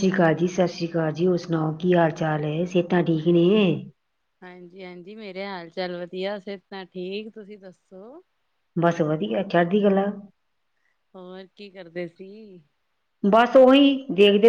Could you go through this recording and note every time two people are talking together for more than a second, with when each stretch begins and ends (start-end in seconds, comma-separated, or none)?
none